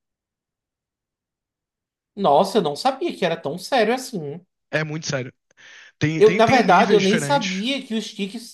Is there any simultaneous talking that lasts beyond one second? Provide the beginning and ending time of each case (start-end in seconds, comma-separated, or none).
6.2-7.7